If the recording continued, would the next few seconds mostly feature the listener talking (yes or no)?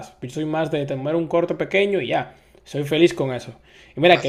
no